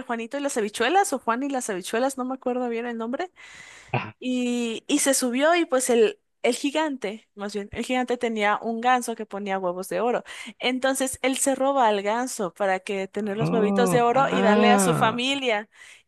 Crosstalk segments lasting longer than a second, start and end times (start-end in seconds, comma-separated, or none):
13.4-15.2